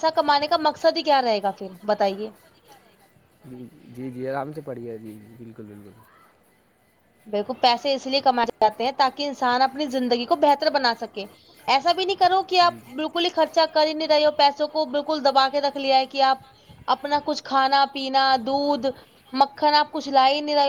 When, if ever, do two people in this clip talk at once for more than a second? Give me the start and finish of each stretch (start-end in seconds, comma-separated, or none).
none